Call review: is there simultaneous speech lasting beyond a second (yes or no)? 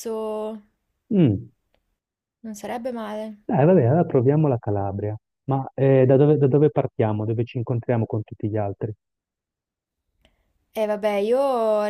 no